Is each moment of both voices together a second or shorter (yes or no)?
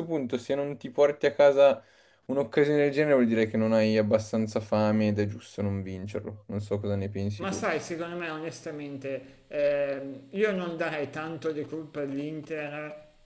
yes